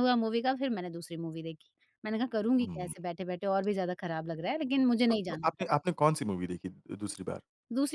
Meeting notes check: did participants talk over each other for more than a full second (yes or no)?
no